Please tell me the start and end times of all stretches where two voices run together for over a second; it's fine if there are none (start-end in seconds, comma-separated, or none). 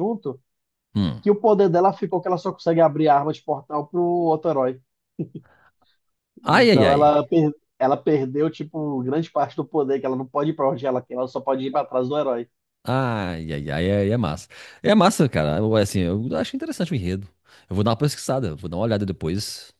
none